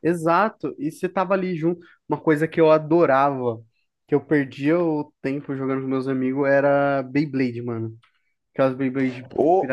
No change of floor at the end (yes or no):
no